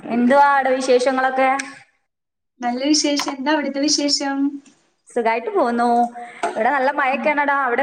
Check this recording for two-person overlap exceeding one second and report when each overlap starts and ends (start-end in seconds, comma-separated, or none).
none